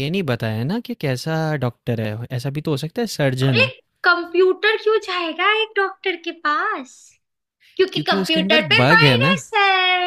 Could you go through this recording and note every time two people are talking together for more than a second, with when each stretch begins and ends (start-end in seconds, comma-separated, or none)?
7.9-9.4